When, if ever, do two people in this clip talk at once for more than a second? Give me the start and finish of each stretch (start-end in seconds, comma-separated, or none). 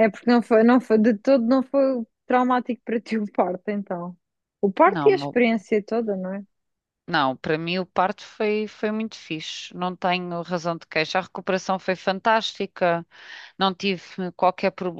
none